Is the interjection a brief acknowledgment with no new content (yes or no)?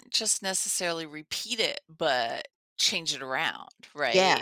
yes